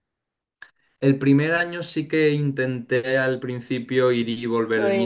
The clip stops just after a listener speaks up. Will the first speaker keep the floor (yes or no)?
yes